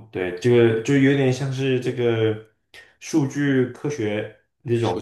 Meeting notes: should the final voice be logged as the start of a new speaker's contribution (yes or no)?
no